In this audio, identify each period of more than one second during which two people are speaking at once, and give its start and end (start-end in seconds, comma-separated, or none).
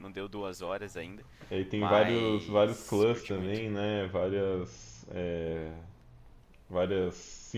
1.8-3.6